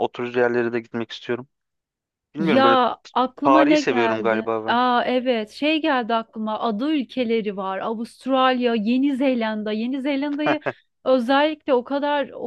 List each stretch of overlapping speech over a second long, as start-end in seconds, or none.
3.4-4.8